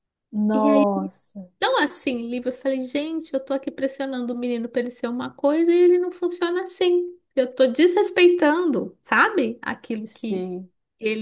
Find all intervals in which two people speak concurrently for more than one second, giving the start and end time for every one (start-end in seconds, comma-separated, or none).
none